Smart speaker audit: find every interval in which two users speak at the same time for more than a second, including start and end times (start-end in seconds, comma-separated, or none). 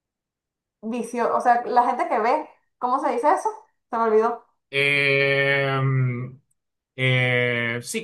none